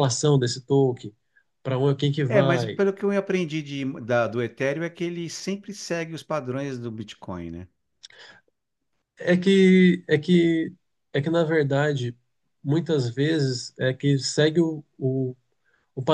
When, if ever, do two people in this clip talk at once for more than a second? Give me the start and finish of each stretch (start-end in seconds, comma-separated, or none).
none